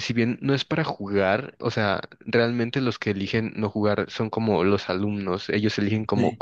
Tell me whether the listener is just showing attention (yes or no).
yes